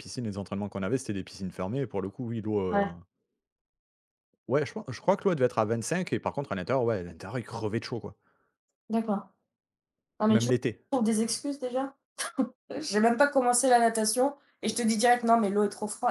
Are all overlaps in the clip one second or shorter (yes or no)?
yes